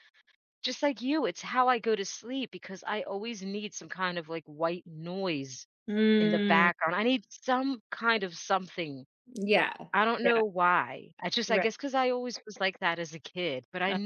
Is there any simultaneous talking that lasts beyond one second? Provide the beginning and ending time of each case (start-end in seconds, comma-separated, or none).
none